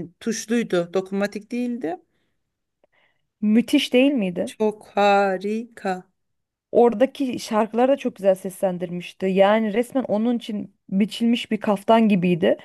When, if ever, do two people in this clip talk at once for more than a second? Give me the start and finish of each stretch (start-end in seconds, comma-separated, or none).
none